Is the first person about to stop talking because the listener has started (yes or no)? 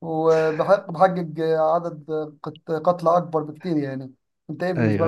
yes